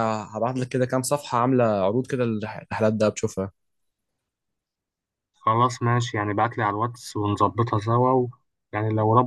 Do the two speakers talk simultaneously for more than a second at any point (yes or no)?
no